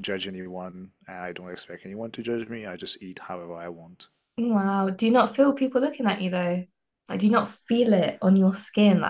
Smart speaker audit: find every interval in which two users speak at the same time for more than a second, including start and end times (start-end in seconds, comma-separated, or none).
none